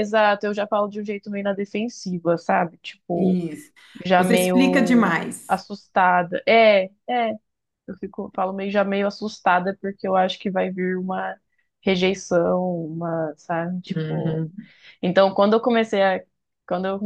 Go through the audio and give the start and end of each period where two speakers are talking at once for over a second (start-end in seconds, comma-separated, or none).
4.2-5.6